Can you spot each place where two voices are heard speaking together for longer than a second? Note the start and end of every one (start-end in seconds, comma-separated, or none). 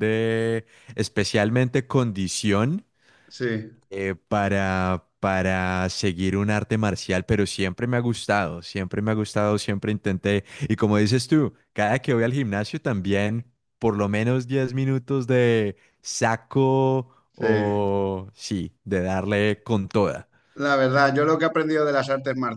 none